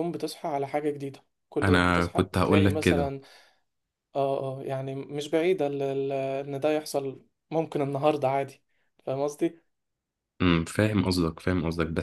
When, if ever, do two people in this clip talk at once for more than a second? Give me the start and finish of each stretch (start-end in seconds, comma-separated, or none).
1.6-3.1